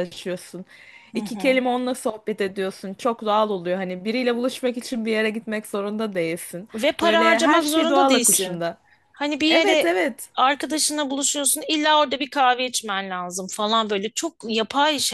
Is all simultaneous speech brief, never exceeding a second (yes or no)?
no